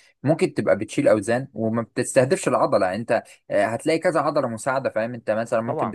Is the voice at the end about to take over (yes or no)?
no